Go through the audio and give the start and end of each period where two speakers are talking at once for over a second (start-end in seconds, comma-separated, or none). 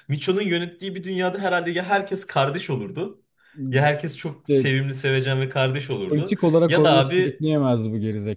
6.1-7.4